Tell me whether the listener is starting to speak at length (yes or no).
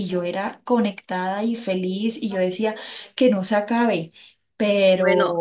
yes